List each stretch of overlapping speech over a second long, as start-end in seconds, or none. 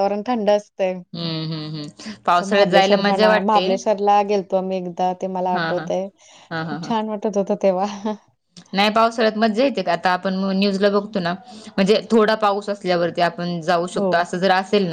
2.5-3.8